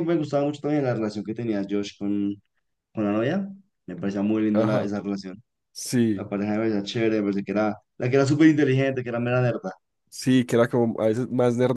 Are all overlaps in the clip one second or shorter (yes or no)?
yes